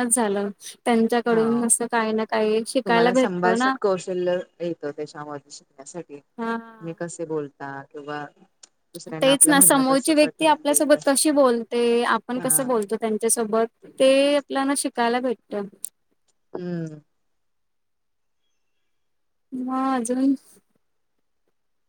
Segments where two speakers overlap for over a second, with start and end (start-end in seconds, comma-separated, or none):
9.2-11.0